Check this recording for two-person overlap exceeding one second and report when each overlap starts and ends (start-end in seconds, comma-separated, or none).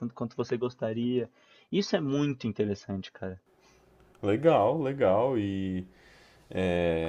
none